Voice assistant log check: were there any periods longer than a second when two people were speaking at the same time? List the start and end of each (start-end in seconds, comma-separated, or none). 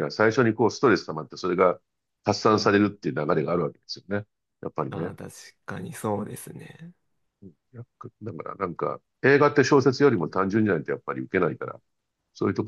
none